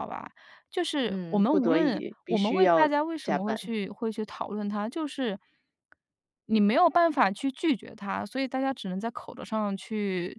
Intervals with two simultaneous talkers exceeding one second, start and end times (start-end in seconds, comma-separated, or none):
1.1-3.7